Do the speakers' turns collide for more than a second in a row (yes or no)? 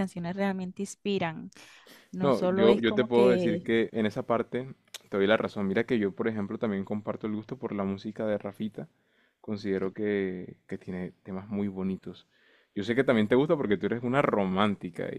yes